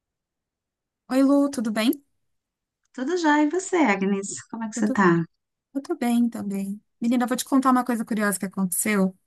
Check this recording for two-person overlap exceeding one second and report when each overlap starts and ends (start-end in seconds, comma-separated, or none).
none